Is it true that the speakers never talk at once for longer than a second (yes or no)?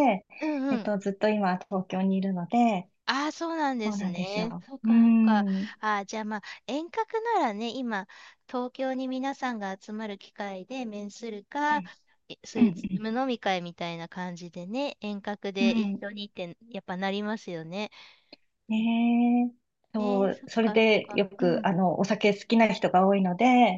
no